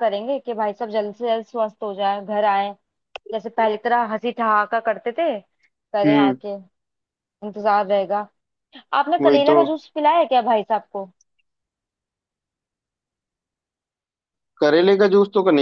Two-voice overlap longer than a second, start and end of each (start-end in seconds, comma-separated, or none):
none